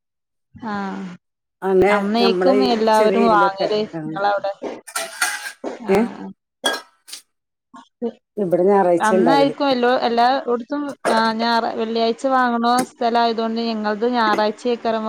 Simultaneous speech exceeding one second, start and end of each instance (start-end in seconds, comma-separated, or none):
2.0-4.1